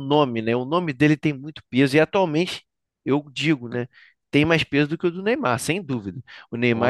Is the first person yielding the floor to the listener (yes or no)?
no